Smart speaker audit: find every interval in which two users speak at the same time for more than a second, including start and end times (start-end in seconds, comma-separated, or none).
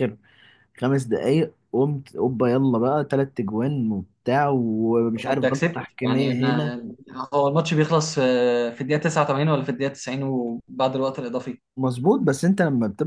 5.1-6.8